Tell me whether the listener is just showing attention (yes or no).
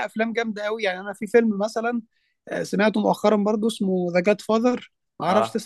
yes